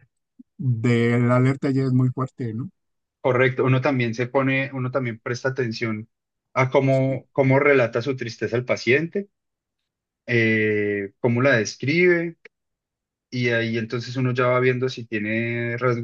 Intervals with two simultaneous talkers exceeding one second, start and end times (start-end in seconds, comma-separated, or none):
none